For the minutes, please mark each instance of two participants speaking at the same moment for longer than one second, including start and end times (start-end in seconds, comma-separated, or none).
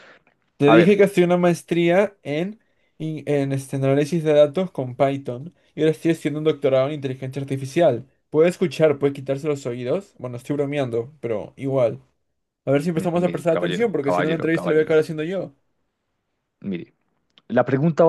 12.9-15.0